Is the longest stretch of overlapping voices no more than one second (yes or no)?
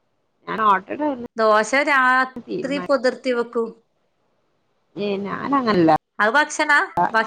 yes